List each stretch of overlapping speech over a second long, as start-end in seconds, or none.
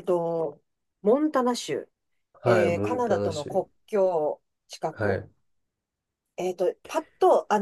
2.4-3.7